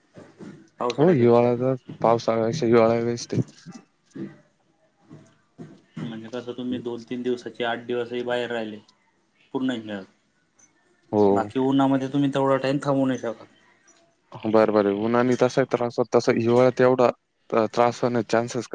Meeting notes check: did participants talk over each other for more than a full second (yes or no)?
no